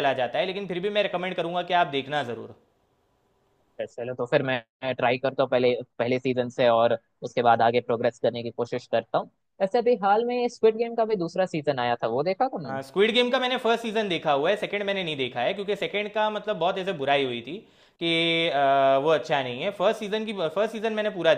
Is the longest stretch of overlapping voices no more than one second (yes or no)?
yes